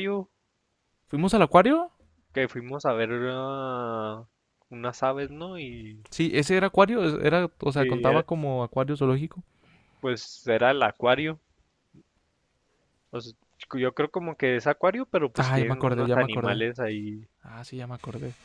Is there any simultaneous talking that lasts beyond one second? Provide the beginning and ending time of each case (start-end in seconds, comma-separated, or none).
15.4-16.6